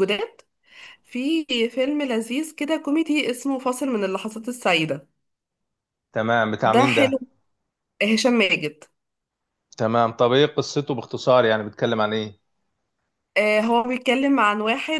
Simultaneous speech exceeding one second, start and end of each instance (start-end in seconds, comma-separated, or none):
none